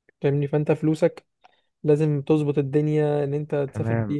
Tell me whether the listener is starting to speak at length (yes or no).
yes